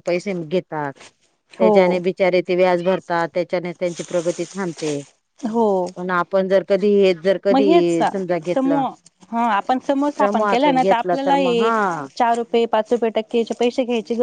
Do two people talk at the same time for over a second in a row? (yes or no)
yes